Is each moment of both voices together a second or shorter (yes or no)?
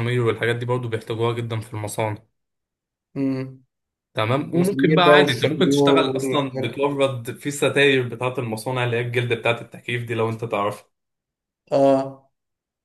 no